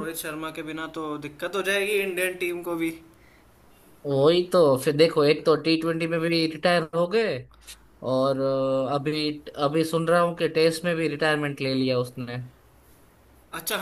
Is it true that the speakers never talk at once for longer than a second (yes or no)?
yes